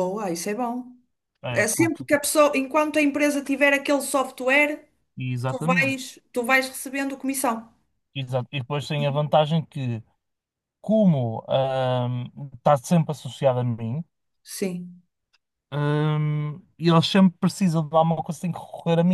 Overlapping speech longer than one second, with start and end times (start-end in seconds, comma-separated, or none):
none